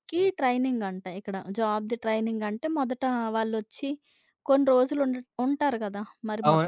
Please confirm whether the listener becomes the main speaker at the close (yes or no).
yes